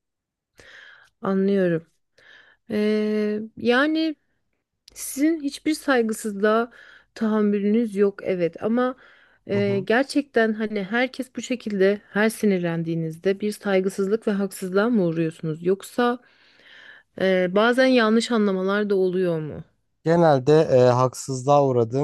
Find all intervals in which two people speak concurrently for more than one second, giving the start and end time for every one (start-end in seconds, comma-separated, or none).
none